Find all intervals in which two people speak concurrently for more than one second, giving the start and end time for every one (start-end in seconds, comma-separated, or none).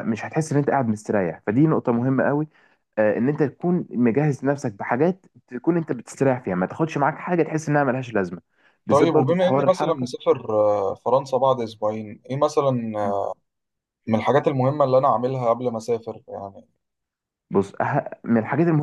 8.9-10.2